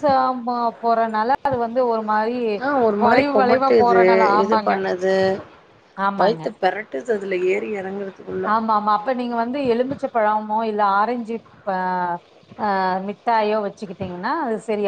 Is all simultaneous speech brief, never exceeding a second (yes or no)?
yes